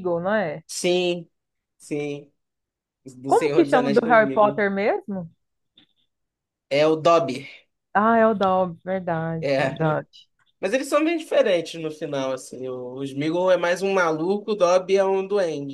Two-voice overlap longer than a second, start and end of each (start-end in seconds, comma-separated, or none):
3.3-4.7